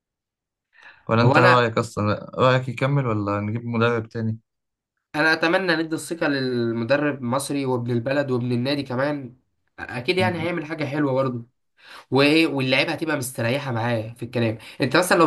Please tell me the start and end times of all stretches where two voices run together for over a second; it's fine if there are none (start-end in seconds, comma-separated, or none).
none